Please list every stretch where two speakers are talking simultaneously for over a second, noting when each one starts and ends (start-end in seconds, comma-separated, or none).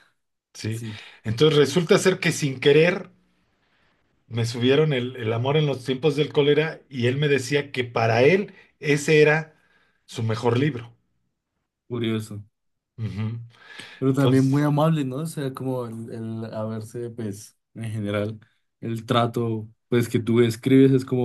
none